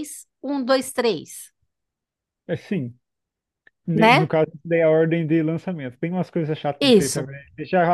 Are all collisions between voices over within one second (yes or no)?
yes